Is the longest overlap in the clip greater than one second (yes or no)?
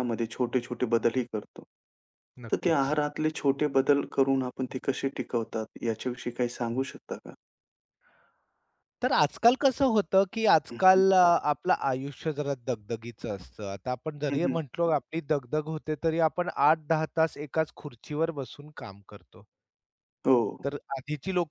no